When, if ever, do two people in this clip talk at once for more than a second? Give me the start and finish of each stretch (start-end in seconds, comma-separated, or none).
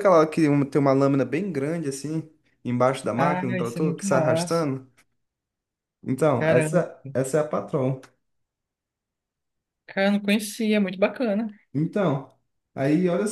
3.1-4.7